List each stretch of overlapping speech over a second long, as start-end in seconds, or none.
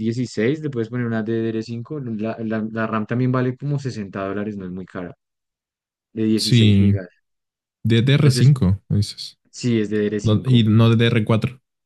none